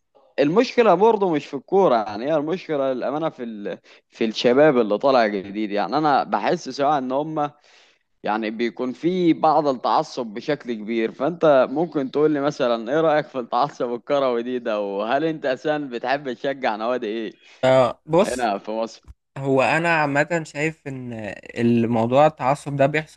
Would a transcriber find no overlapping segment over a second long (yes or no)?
yes